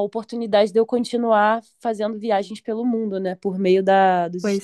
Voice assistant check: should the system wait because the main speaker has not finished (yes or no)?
yes